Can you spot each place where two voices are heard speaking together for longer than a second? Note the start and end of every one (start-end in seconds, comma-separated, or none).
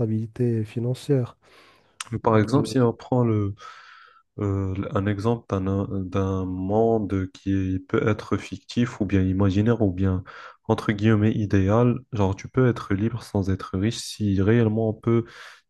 none